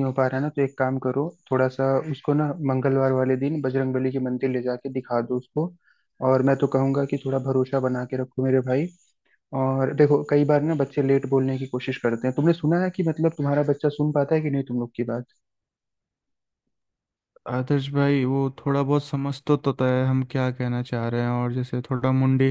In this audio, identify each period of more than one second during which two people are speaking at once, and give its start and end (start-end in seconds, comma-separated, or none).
none